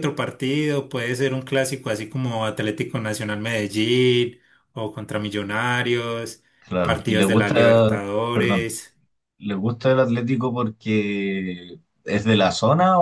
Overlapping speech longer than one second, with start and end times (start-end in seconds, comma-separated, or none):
6.8-8.7